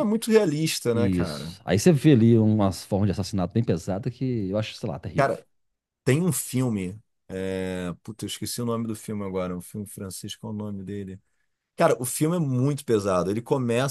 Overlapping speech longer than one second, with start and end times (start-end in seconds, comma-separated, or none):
none